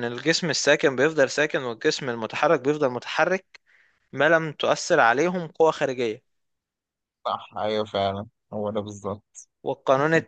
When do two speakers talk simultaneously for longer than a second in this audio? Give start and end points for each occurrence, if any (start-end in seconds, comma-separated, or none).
none